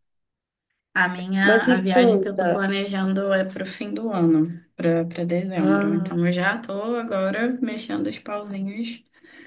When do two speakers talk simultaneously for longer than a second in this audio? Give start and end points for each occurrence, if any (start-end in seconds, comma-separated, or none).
1.4-2.6